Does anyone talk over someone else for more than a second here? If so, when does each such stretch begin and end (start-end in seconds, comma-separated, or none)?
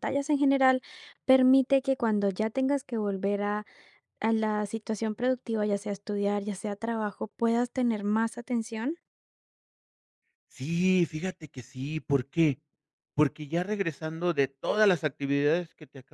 none